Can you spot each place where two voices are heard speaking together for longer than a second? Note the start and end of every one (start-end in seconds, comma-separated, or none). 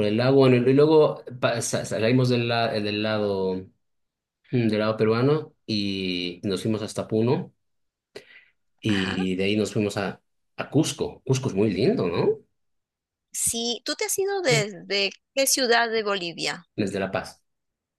none